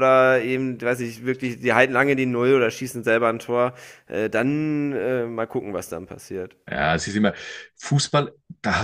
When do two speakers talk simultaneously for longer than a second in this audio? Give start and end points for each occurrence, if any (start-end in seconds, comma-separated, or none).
none